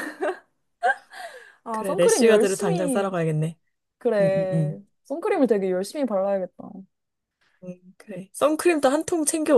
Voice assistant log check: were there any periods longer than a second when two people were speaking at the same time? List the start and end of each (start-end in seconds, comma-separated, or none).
1.7-3.1